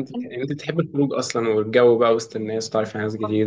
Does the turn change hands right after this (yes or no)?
yes